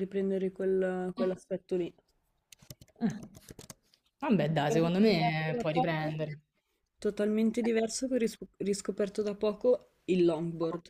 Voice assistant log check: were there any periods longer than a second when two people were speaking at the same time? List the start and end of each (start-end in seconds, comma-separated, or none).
4.7-6.2